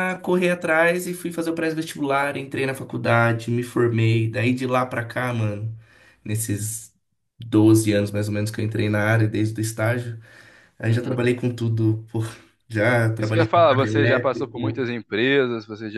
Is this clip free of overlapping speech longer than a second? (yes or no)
no